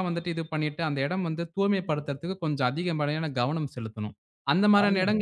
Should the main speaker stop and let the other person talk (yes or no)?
no